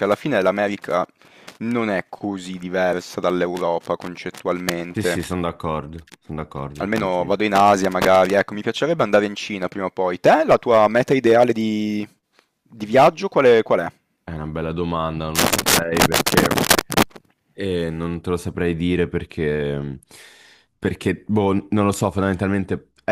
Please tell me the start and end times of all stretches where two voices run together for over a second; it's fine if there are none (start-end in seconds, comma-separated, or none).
none